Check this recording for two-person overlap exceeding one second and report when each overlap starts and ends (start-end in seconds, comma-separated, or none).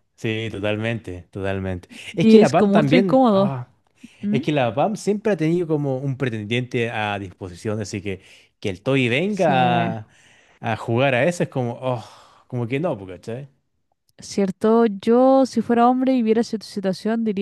2.2-3.6